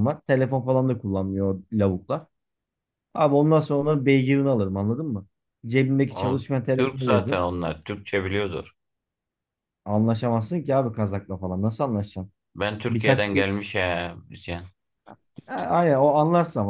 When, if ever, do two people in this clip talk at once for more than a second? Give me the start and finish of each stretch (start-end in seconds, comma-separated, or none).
6.1-7.5